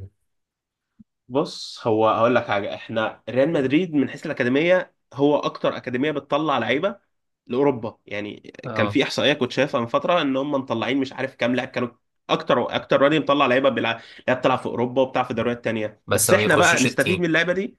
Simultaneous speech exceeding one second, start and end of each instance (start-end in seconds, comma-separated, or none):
16.1-17.3